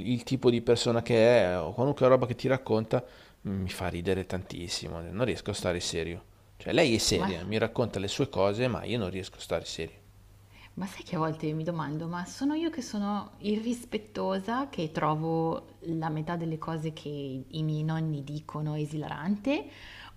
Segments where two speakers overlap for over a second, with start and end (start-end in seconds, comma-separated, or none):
none